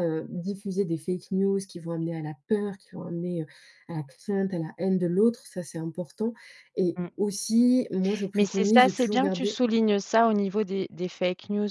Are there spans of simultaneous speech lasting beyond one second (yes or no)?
yes